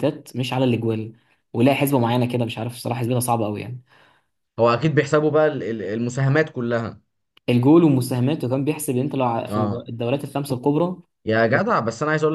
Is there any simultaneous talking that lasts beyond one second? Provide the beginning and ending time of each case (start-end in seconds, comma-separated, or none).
none